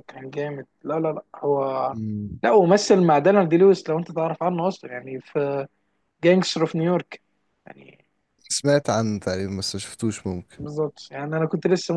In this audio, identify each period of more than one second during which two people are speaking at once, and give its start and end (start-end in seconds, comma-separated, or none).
none